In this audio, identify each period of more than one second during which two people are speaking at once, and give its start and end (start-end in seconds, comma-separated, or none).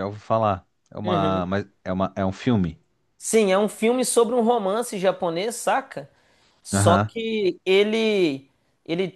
none